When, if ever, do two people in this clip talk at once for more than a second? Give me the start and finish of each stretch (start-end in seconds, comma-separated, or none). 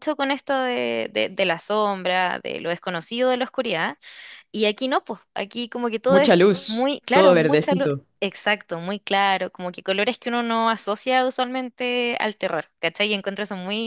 6.1-8.1